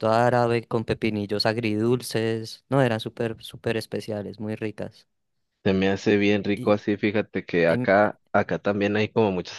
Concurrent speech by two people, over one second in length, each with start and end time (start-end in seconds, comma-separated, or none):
none